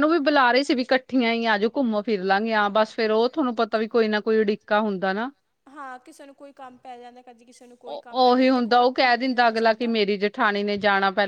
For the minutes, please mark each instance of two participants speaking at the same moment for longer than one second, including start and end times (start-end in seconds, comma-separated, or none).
none